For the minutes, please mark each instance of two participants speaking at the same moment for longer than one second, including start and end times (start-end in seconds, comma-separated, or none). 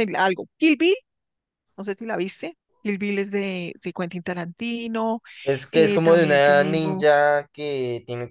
5.7-7.1